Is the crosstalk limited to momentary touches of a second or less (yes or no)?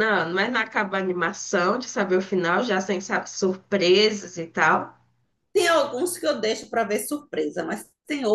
yes